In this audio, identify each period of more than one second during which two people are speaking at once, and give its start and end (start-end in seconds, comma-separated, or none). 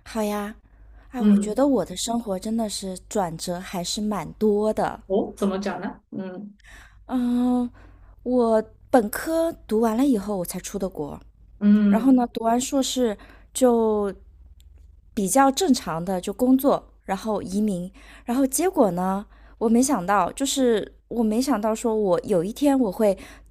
none